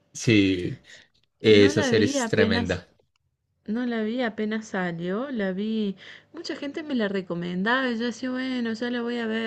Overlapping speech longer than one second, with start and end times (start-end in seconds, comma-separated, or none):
1.4-2.8